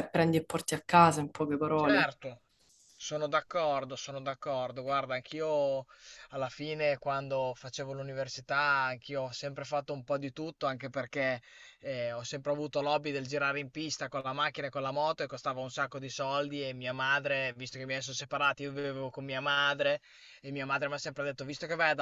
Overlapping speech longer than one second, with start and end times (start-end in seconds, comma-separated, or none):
none